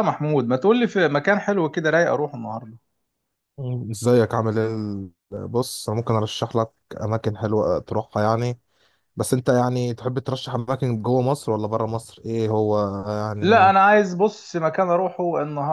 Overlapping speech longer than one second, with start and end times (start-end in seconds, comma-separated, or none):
none